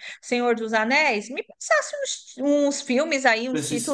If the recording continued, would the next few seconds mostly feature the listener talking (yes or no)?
no